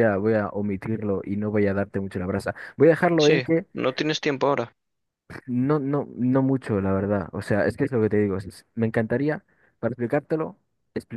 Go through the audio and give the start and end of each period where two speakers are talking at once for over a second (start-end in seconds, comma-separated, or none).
none